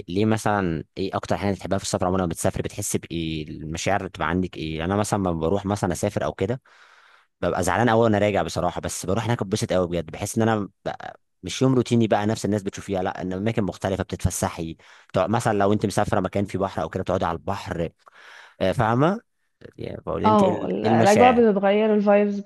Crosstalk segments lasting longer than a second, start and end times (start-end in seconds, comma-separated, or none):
20.2-21.4